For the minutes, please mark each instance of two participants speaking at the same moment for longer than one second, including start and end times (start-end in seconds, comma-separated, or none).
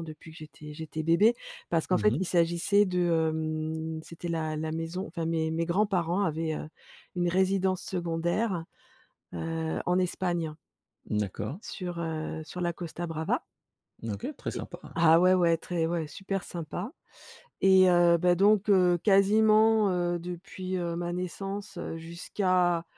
none